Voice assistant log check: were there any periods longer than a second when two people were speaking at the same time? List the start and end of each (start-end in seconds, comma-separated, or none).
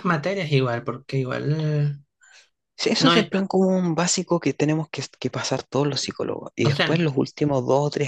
none